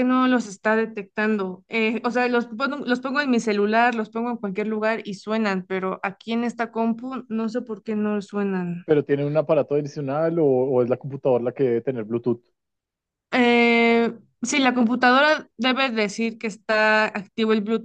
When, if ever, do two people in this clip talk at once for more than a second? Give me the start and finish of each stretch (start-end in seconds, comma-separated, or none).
none